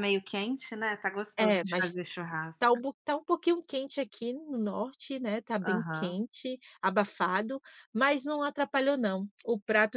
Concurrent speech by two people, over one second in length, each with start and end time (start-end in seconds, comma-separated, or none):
none